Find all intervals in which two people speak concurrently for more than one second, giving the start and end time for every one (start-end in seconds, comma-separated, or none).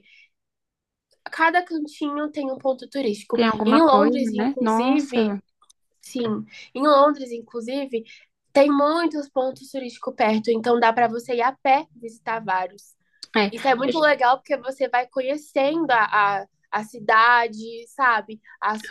3.3-5.4